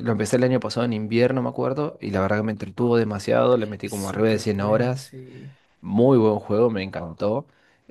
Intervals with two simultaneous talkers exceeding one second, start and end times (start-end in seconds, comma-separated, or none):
3.8-5.1